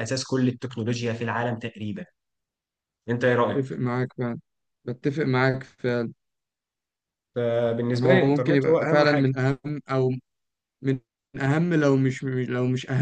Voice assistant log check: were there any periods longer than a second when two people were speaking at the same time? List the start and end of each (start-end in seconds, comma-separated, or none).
7.9-9.3